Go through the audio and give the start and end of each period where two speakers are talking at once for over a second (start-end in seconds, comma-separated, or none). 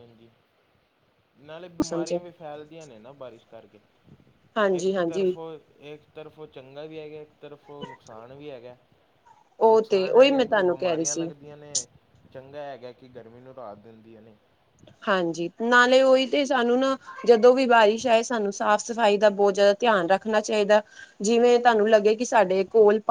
9.7-11.2